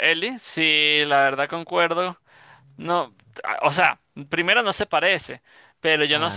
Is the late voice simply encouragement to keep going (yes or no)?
yes